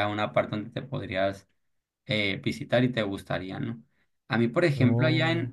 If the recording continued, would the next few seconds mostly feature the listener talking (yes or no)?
no